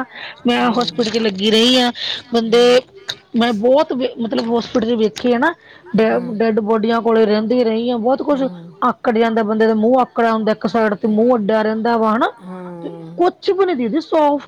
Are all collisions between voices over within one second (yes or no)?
yes